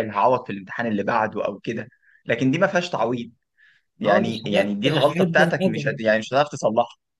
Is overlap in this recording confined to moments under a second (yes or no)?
no